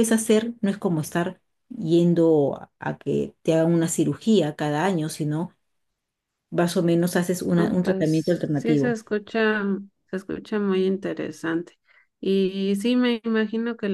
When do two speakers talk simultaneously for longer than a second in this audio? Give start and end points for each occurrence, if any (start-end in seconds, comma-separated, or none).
7.5-9.0